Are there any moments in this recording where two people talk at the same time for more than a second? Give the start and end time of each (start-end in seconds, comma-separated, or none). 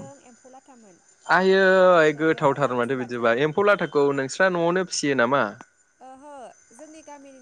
1.9-3.3